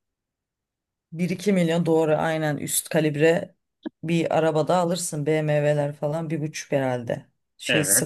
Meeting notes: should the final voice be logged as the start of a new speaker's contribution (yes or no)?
no